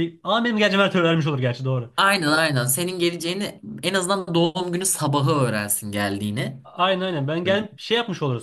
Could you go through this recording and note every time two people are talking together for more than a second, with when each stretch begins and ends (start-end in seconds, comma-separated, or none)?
none